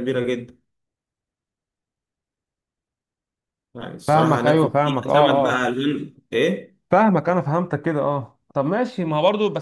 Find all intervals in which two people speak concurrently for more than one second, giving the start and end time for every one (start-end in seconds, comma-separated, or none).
4.1-5.7